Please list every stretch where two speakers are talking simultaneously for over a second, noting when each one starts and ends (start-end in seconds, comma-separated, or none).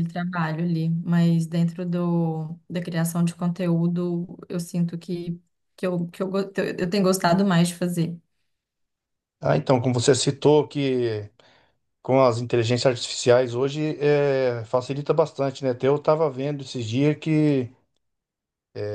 none